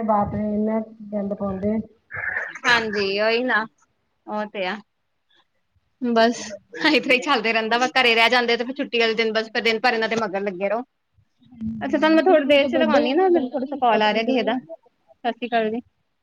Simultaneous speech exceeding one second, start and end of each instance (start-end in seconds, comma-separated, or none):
11.5-14.6